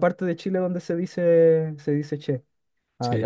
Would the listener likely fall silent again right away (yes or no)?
no